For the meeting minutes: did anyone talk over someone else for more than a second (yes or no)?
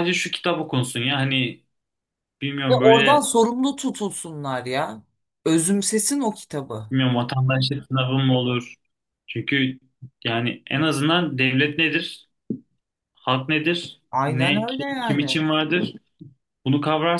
yes